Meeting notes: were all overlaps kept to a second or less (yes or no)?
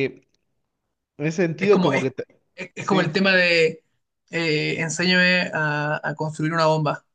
yes